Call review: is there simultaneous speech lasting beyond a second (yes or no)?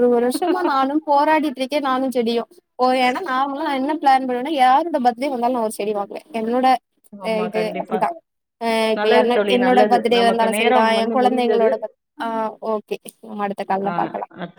yes